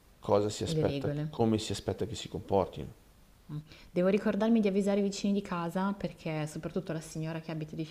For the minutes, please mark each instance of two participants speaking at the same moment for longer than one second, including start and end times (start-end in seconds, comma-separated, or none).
none